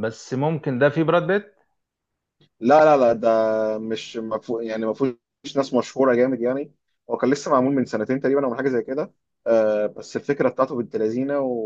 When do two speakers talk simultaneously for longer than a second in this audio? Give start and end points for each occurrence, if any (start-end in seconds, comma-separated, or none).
none